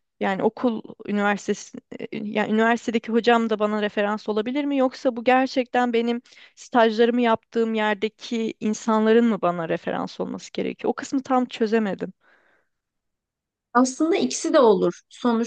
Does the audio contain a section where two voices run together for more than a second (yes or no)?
no